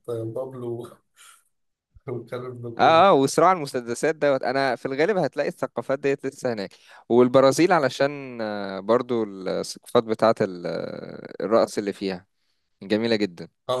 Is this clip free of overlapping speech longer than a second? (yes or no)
yes